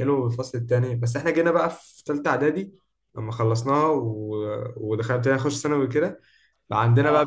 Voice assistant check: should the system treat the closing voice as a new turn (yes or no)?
no